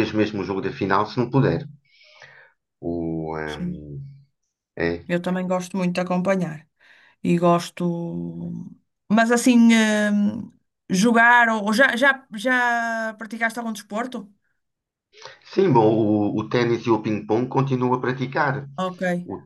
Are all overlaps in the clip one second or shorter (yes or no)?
yes